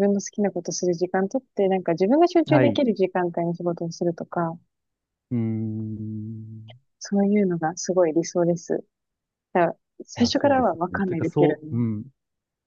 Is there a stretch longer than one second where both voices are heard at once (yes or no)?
yes